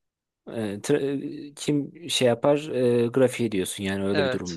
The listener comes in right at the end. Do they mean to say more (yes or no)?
yes